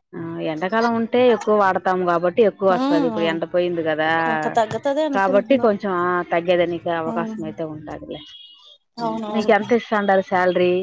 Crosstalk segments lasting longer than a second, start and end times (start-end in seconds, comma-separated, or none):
none